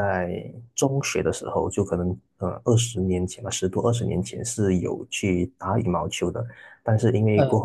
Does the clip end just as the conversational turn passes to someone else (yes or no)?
no